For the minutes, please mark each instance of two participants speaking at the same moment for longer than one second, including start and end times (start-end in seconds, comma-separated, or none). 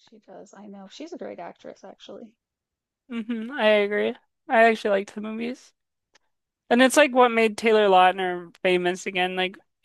none